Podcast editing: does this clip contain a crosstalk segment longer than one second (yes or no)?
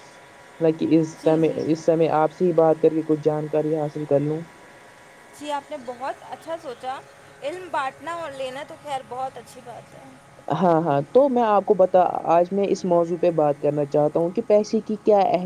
no